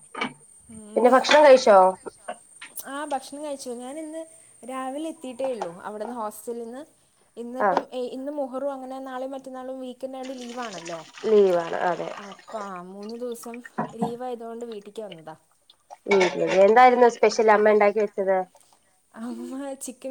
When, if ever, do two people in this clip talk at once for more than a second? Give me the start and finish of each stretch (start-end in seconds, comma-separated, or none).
none